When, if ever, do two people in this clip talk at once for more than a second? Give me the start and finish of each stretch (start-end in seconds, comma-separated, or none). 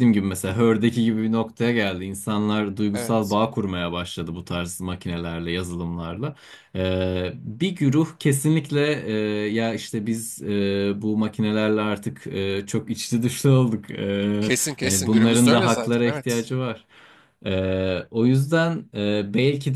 14.8-16.4